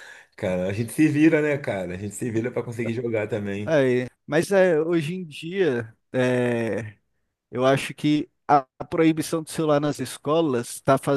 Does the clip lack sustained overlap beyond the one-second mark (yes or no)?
yes